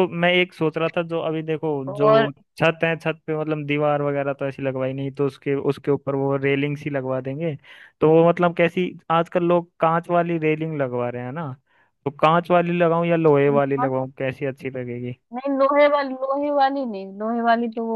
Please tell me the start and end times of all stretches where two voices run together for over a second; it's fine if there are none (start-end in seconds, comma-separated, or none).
none